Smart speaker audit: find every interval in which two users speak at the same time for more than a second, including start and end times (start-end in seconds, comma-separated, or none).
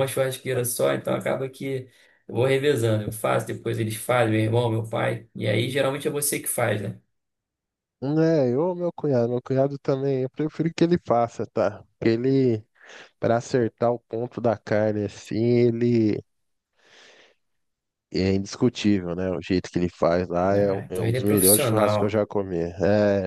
20.5-22.2